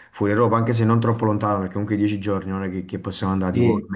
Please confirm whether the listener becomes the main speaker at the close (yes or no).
yes